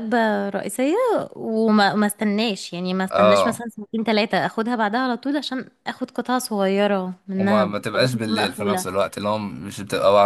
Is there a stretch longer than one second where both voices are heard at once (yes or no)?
yes